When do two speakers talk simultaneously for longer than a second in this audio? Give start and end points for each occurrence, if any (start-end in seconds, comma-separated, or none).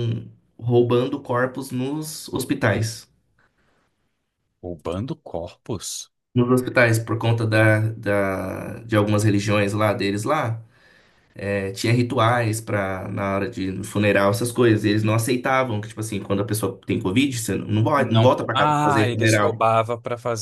18.0-19.6